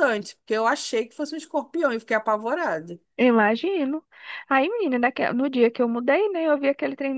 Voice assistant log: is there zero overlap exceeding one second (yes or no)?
yes